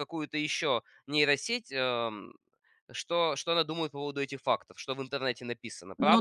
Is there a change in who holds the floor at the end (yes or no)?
yes